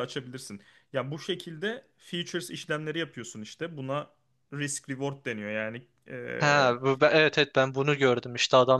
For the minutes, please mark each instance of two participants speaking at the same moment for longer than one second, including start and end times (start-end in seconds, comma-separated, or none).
none